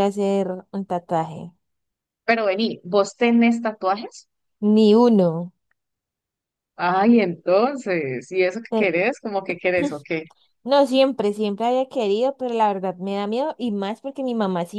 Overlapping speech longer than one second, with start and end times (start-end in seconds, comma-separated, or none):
none